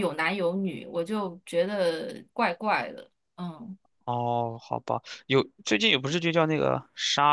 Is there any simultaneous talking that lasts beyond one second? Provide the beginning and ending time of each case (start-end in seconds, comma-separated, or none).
none